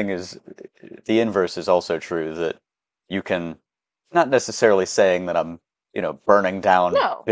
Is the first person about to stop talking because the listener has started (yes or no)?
no